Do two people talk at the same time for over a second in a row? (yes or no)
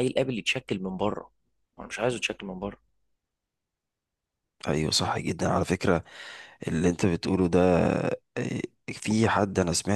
no